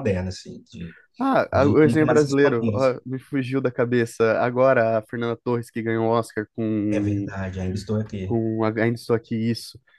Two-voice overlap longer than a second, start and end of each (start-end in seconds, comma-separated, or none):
1.5-2.8